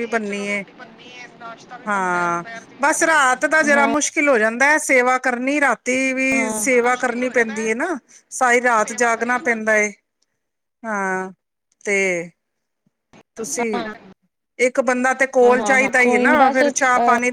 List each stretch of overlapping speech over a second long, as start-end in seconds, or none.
15.4-16.7